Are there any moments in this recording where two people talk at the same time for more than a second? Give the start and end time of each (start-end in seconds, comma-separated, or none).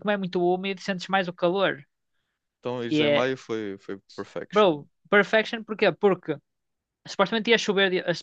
none